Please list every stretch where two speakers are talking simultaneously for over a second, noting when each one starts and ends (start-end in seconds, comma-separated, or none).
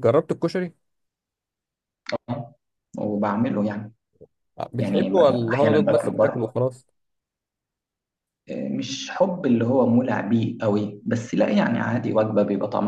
4.8-6.5